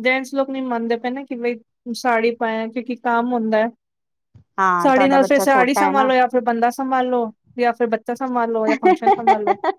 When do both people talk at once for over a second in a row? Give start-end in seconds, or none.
4.8-6.1